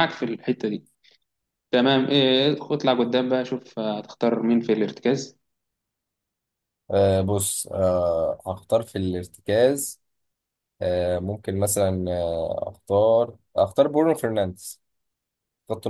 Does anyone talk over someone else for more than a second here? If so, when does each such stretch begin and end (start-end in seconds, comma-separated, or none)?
none